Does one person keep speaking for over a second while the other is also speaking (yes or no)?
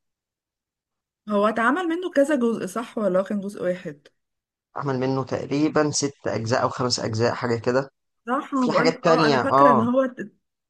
yes